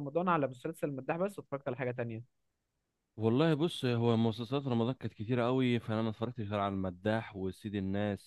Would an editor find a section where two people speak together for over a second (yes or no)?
no